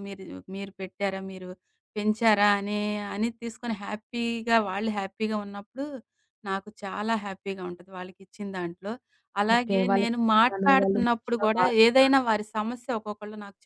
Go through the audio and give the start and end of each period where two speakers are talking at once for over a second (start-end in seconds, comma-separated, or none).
9.5-11.8